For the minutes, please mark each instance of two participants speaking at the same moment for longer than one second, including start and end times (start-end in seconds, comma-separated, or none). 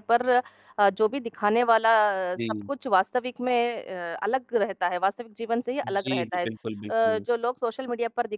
5.8-7.3